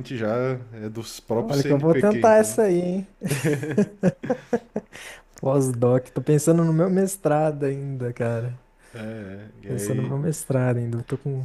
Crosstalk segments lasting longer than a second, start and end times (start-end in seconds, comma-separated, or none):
1.3-2.5